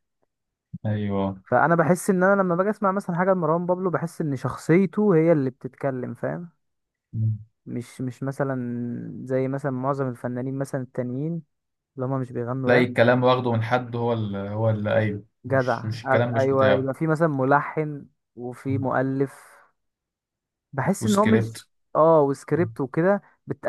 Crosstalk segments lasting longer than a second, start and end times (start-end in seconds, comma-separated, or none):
15.4-16.9